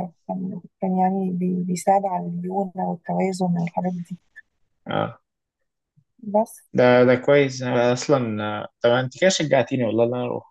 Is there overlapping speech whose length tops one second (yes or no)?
no